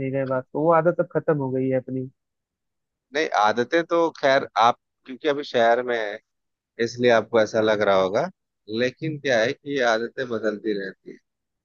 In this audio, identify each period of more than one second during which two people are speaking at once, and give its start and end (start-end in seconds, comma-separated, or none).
none